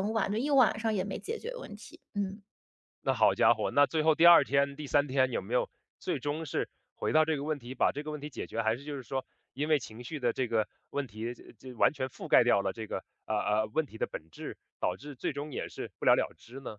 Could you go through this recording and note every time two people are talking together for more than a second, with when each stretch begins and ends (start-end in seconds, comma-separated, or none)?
none